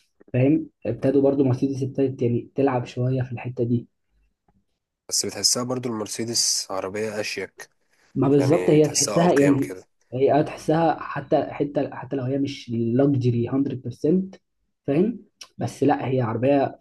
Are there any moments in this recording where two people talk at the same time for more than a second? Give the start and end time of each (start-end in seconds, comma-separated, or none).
8.3-9.7